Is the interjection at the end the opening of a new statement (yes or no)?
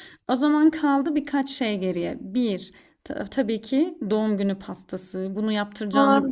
no